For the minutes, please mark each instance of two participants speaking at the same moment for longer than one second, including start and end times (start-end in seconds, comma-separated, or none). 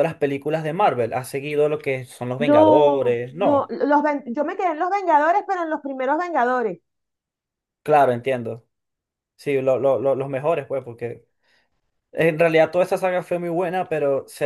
2.4-3.7